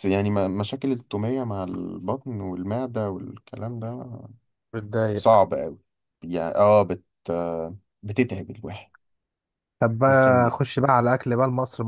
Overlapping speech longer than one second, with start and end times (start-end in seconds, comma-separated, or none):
none